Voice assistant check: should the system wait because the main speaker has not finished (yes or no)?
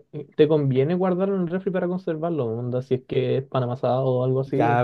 no